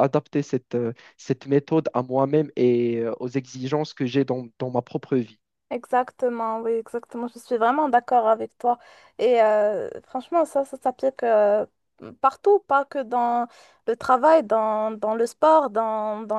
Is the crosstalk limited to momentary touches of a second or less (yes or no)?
yes